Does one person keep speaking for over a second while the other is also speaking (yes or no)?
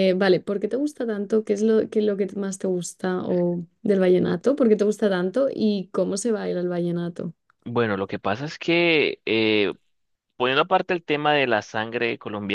no